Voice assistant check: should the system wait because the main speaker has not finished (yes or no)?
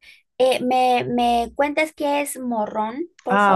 no